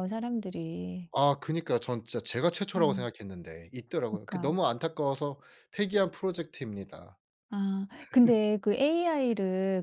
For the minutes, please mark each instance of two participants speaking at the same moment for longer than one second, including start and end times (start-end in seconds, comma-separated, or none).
none